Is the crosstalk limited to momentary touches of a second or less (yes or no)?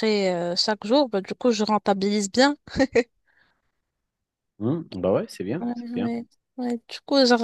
yes